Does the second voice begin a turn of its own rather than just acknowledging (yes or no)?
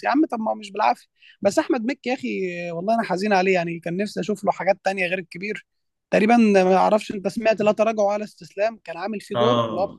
yes